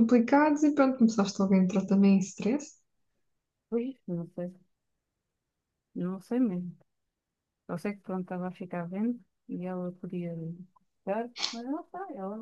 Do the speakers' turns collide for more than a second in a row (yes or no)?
no